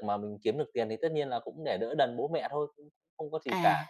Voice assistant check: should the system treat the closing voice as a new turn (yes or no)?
no